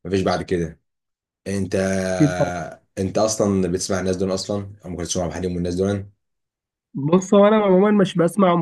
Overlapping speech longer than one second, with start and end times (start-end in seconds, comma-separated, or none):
none